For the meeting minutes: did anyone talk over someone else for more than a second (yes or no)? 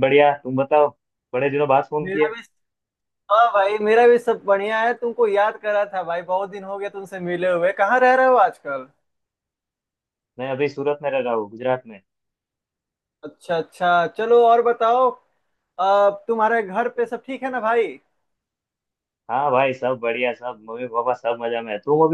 no